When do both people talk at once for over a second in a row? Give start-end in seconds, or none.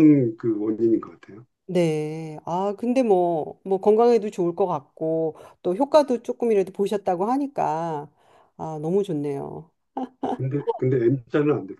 none